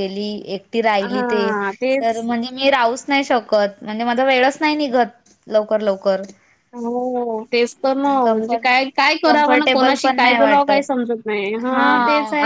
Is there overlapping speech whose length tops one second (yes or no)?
yes